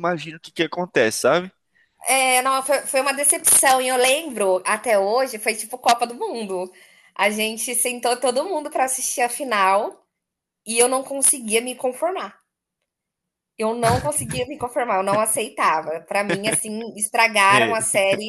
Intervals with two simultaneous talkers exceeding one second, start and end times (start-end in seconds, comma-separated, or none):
none